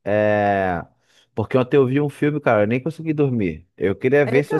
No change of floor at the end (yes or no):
yes